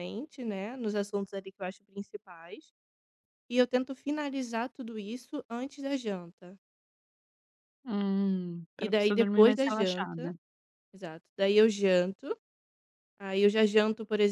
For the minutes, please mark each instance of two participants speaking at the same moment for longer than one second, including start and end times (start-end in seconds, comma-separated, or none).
8.8-10.3